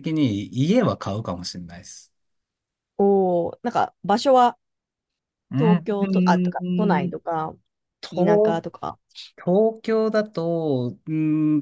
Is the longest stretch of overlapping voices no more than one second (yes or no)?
no